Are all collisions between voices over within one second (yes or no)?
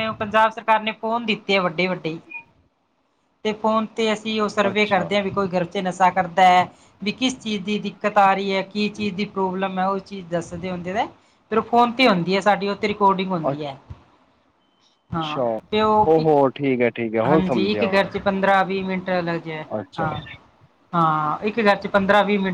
yes